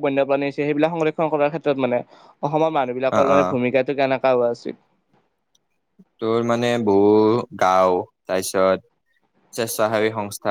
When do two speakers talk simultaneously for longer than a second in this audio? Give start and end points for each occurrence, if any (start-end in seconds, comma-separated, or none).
none